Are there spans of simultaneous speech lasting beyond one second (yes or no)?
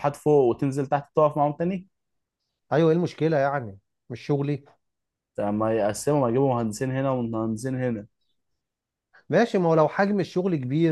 no